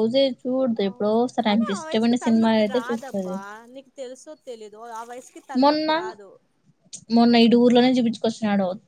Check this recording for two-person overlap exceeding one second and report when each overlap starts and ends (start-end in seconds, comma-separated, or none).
0.9-3.3